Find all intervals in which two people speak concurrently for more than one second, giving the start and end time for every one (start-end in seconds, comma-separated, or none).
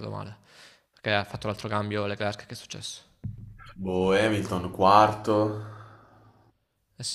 none